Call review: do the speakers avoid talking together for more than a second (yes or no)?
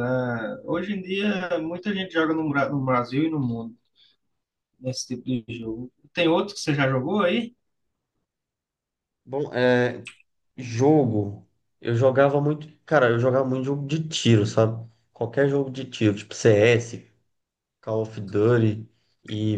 yes